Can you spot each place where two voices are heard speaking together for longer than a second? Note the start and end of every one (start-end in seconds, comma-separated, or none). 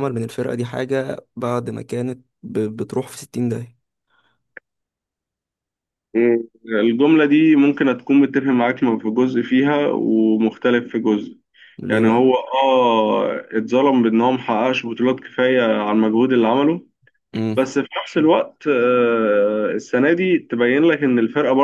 none